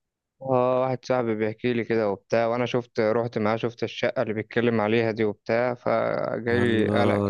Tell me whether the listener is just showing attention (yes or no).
no